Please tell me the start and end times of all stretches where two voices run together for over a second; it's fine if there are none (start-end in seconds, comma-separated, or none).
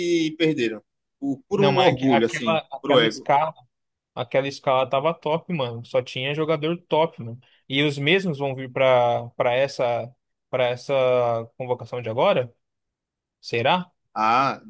1.5-3.3